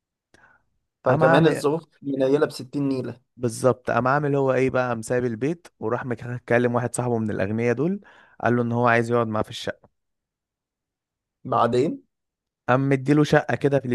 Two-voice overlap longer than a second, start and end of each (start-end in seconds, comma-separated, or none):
none